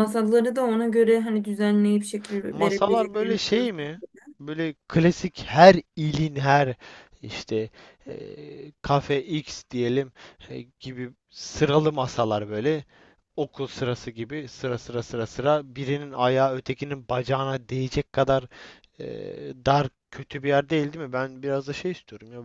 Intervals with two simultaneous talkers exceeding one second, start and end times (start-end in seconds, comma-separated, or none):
2.5-3.9